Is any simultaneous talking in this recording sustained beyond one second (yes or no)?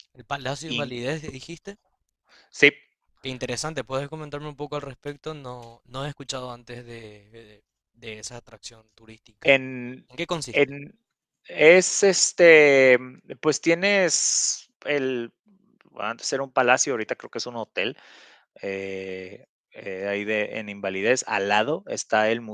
no